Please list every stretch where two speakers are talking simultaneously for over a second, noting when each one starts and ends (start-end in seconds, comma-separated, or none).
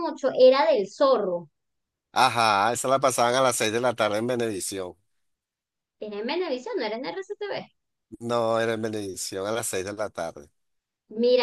none